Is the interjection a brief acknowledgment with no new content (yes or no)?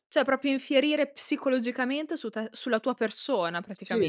no